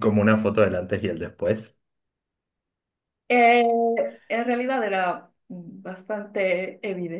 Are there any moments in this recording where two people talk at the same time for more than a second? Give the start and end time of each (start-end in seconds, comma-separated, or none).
none